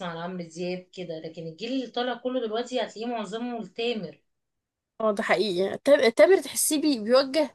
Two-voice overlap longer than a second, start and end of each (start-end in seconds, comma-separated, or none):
none